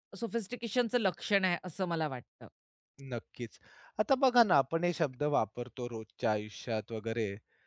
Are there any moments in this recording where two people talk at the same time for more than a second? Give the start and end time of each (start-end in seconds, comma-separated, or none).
none